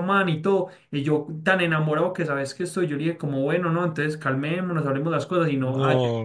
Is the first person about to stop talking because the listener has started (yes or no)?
no